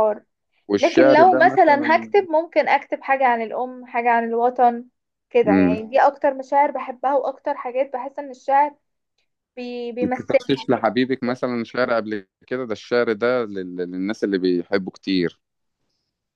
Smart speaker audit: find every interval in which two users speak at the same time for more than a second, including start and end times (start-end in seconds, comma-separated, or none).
0.8-2.0